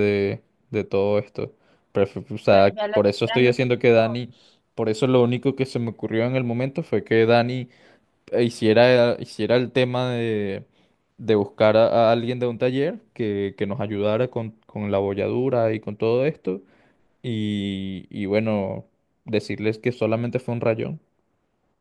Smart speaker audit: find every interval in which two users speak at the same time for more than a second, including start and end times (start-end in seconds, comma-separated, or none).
2.5-4.2